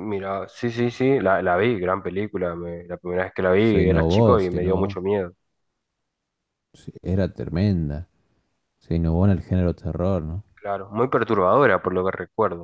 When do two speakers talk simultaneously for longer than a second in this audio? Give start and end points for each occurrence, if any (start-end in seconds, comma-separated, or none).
3.6-5.0